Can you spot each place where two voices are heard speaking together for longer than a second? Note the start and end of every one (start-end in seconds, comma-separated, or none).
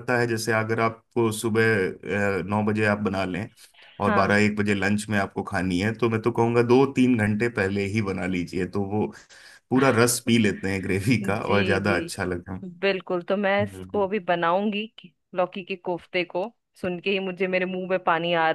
11.2-12.6